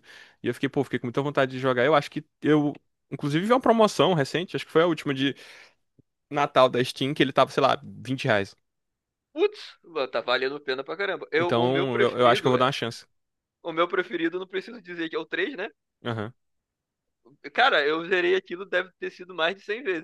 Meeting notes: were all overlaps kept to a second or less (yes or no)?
no